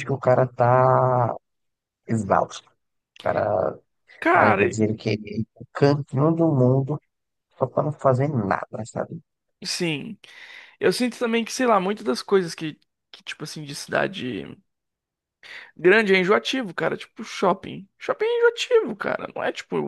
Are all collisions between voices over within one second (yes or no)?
yes